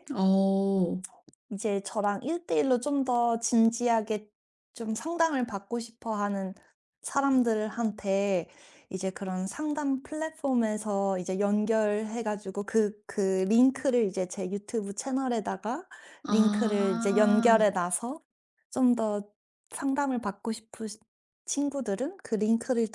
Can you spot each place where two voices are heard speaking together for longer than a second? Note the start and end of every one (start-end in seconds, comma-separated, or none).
16.3-17.6